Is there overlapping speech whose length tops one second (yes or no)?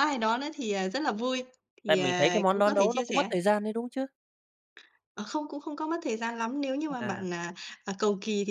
yes